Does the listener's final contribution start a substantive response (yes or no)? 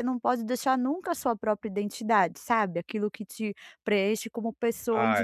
yes